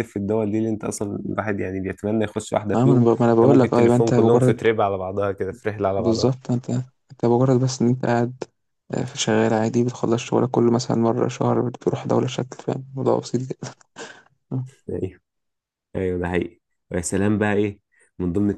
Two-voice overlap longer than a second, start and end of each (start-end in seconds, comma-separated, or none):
2.7-4.7